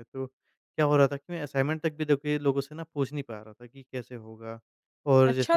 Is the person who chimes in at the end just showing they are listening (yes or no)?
no